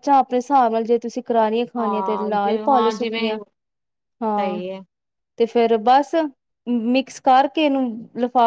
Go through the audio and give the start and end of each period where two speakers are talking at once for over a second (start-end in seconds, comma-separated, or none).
1.8-3.4